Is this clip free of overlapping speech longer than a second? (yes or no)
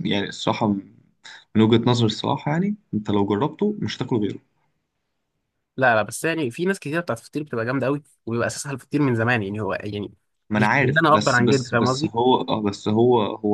no